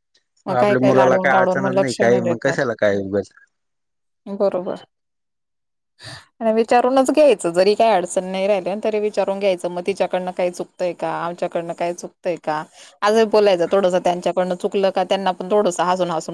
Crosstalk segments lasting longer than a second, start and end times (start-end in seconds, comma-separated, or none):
0.6-2.6